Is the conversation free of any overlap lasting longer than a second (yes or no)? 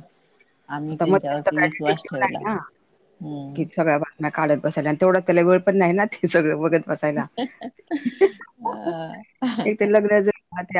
no